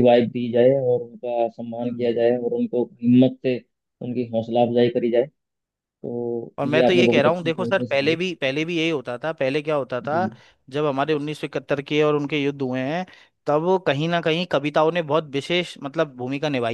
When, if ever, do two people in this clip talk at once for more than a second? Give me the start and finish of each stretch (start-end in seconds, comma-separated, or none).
6.6-8.2